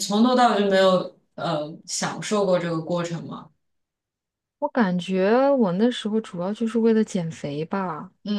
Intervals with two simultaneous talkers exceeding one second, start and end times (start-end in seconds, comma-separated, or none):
none